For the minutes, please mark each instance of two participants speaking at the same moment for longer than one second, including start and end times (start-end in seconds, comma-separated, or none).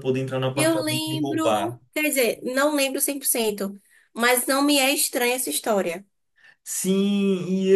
0.5-1.8